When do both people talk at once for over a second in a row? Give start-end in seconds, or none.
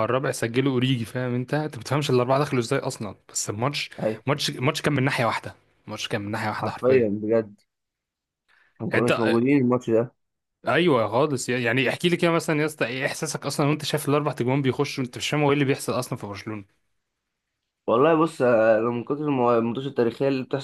none